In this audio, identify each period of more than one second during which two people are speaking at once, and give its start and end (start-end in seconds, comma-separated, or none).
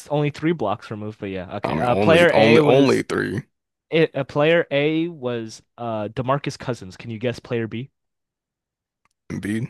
1.6-3.0